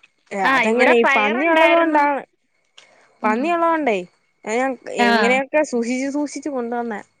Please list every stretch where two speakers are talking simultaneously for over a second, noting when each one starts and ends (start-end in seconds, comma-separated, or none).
0.5-2.0